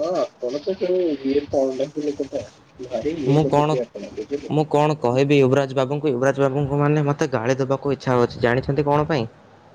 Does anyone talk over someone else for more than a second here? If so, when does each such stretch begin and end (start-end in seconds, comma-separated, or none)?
none